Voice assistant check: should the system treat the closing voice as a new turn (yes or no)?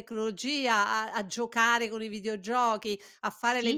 no